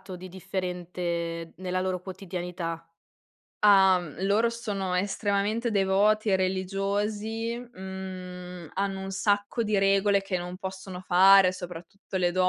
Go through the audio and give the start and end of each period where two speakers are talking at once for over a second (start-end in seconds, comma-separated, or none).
none